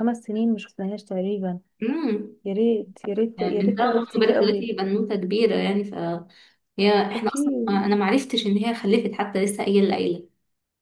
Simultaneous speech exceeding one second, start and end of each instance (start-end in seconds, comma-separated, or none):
3.4-4.8